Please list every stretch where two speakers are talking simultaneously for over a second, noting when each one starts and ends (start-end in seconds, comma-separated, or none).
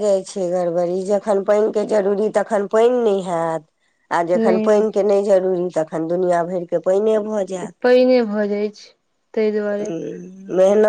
none